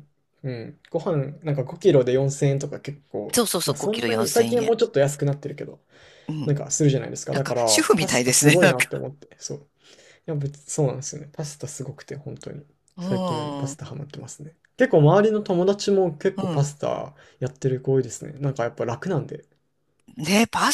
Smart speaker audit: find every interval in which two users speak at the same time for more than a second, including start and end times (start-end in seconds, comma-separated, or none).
3.4-4.8, 7.3-8.9